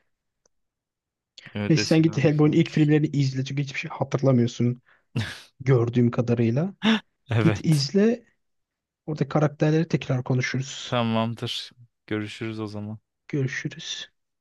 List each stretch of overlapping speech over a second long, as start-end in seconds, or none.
1.7-2.9